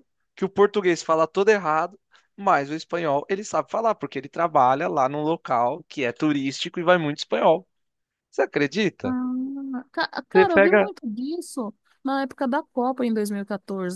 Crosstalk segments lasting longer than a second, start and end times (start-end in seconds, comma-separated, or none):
none